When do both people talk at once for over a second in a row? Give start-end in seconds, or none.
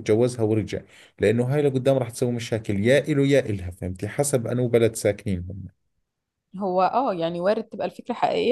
none